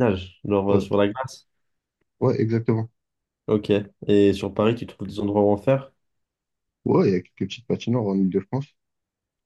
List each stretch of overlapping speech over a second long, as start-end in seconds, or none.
none